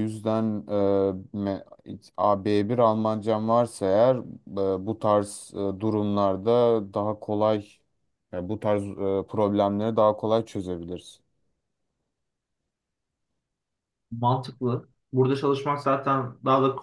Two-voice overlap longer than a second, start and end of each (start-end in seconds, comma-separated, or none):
none